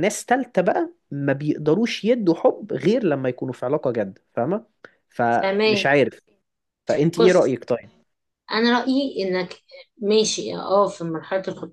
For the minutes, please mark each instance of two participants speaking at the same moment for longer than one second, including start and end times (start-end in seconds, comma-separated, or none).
none